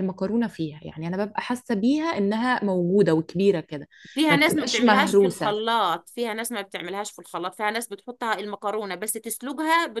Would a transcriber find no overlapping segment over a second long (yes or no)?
no